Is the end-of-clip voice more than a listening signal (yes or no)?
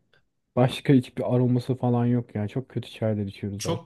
yes